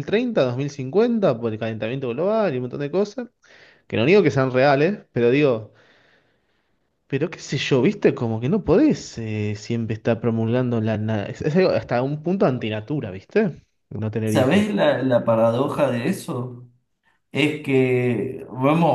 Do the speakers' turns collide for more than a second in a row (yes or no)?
no